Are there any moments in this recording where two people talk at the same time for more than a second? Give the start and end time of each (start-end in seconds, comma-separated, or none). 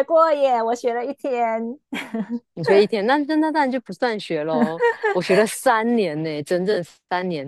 none